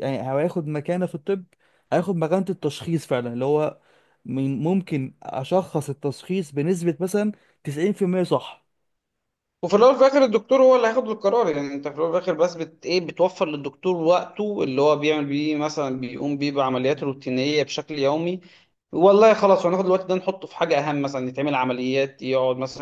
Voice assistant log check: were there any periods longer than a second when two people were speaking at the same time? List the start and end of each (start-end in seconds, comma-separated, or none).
none